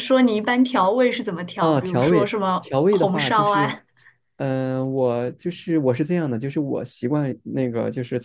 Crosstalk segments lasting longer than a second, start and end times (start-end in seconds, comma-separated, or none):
1.6-3.8